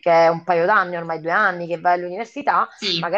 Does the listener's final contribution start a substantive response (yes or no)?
no